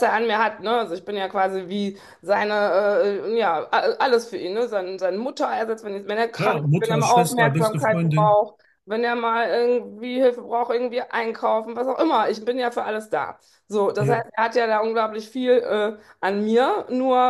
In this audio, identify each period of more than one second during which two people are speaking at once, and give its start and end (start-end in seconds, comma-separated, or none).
6.3-8.4